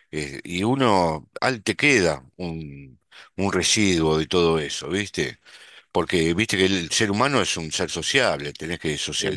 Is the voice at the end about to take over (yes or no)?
no